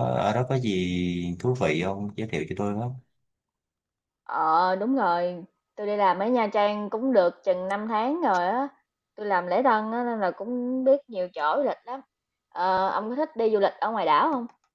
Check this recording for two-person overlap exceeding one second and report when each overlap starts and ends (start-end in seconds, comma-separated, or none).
none